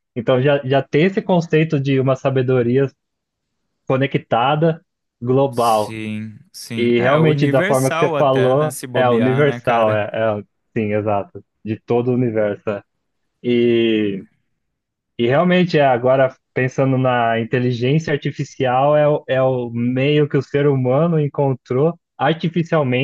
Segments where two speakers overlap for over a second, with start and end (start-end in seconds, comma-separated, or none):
6.8-10.1